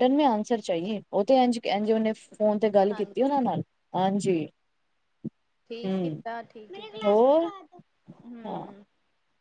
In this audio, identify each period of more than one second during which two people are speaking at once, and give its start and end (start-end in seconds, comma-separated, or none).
none